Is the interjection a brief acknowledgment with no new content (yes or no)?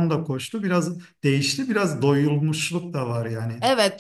no